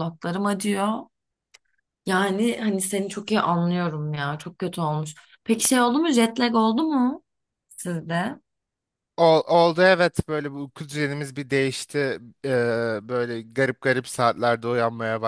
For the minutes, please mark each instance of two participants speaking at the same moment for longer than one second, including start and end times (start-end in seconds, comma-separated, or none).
none